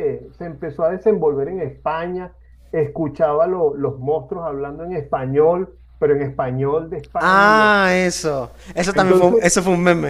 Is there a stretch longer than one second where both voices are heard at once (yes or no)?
no